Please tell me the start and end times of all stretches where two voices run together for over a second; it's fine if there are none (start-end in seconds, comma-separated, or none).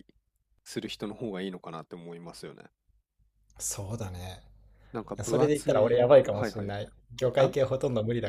5.2-6.7